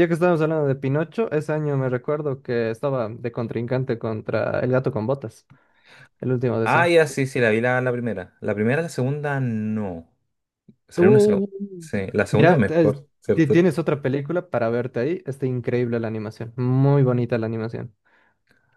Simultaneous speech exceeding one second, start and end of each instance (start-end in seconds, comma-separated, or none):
12.3-13.7